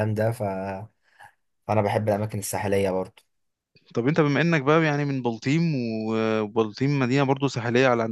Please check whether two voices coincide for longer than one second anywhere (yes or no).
no